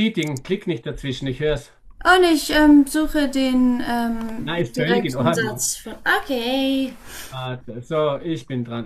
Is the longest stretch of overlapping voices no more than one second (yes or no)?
no